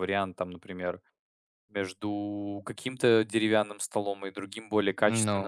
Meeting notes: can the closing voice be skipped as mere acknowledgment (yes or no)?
yes